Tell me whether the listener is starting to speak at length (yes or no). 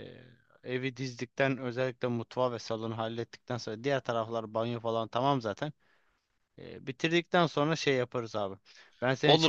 yes